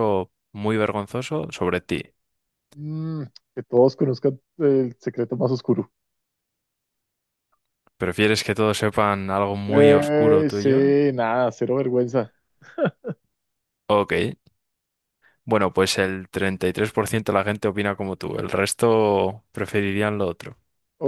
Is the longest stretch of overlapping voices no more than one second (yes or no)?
no